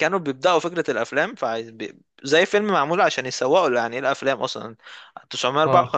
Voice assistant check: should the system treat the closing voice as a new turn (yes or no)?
no